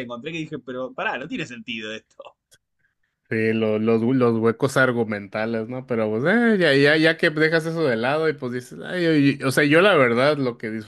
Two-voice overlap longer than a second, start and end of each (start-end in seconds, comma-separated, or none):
none